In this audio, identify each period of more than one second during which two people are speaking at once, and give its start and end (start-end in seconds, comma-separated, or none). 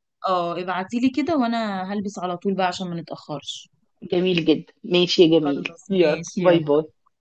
5.4-6.7